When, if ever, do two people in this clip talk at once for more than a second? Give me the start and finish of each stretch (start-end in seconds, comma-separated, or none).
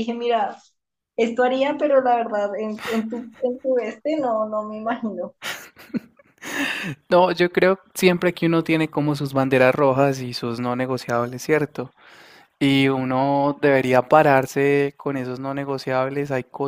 none